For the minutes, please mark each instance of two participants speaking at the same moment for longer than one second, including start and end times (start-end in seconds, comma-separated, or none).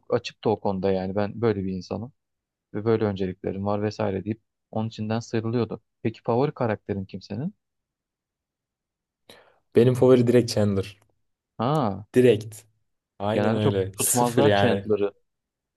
13.3-14.8